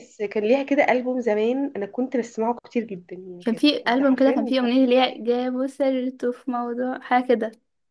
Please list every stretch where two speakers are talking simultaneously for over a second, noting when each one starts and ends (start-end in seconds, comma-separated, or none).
3.5-5.0